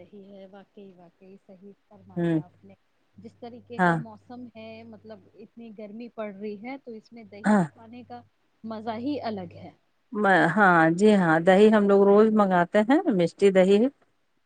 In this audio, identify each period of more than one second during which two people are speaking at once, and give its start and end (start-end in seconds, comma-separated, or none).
none